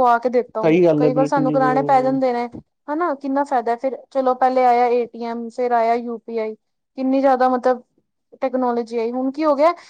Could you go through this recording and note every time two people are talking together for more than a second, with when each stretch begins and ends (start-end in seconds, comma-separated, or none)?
0.6-2.2